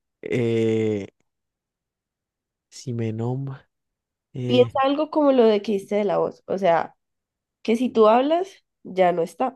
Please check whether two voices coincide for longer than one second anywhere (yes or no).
no